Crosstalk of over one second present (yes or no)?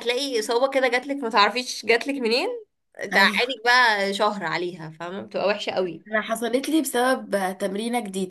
no